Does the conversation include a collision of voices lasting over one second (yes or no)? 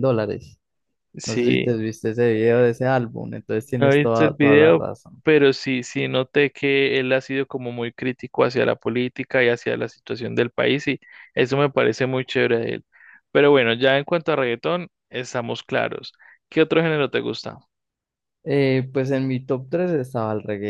yes